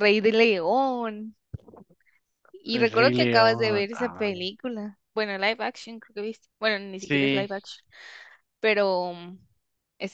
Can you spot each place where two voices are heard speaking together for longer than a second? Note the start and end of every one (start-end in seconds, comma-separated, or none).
2.7-4.3